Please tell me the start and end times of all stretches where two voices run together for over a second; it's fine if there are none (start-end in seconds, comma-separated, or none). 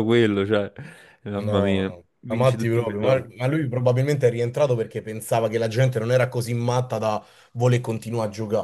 1.4-3.3